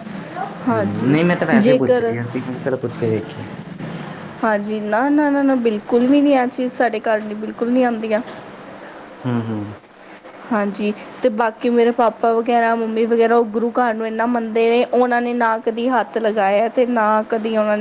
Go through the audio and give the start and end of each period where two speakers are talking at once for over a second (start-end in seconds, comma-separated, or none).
0.7-2.1